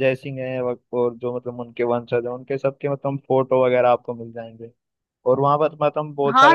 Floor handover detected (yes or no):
yes